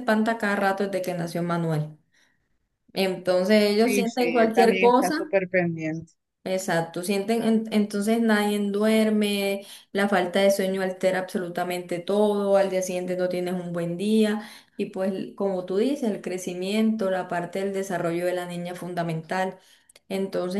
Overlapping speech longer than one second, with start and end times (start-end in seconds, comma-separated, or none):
3.8-5.2